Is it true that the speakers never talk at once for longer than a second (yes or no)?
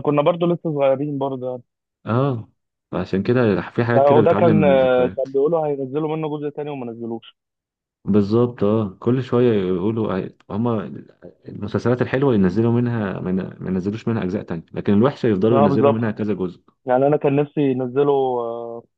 no